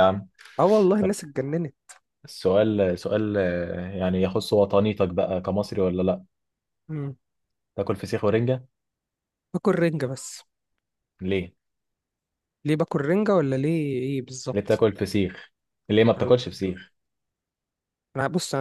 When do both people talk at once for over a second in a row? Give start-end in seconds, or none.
none